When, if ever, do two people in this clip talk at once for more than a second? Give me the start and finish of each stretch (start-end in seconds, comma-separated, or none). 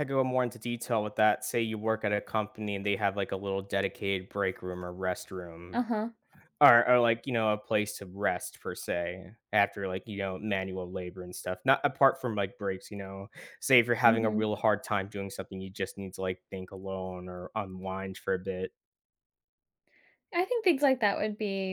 none